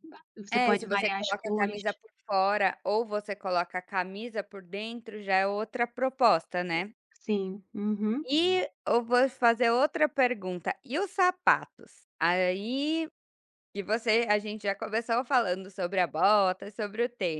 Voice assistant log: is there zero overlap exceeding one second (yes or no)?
no